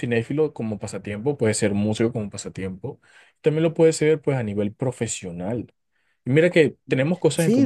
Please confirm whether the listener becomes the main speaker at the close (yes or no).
yes